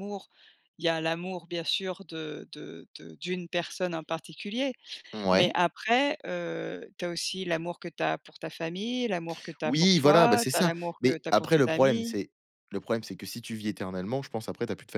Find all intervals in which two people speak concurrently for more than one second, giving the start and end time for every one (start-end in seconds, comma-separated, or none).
9.7-12.2